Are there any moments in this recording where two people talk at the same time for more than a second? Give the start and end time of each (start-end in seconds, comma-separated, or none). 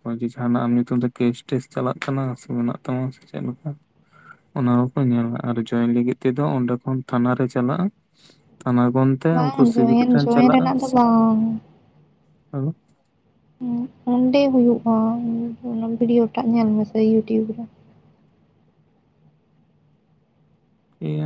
9.3-11.2